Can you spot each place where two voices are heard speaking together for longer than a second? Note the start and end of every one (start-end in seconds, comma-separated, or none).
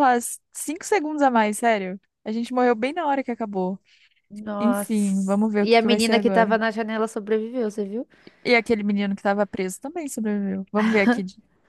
4.6-6.6